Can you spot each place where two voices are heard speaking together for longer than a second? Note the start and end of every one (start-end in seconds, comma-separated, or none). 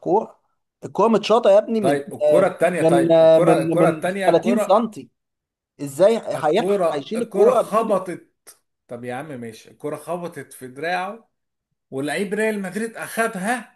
1.8-4.8, 6.3-7.9